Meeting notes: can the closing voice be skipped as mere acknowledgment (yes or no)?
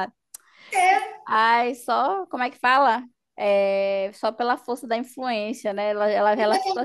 no